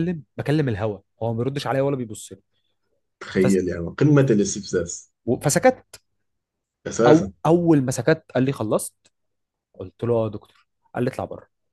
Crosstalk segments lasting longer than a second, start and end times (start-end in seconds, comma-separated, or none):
none